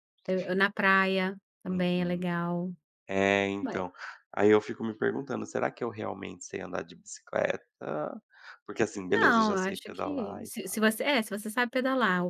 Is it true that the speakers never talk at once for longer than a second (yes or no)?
no